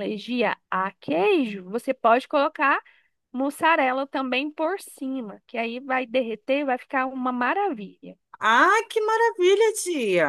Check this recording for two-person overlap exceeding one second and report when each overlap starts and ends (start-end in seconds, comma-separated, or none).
none